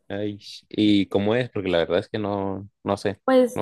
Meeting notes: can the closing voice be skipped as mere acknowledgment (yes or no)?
no